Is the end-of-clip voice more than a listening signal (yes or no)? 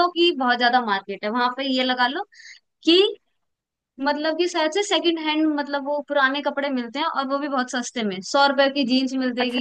yes